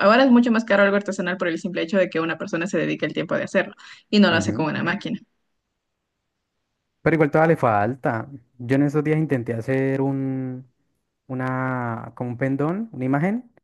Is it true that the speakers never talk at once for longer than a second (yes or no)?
yes